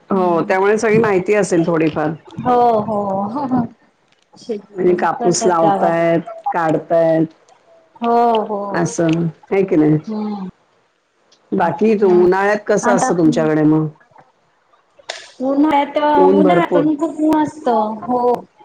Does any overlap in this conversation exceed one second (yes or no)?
no